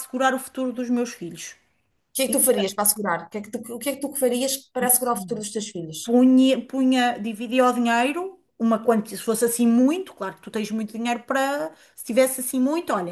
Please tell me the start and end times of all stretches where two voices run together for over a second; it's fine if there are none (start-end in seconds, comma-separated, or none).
none